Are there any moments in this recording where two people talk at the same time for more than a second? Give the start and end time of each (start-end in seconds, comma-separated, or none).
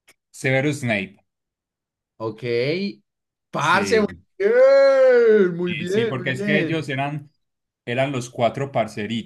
5.6-6.9